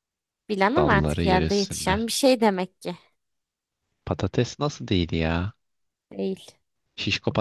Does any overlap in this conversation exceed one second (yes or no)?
yes